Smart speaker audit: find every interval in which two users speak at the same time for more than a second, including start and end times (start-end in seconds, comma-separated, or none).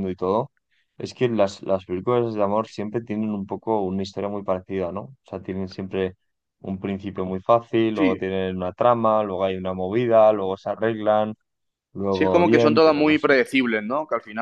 12.1-13.3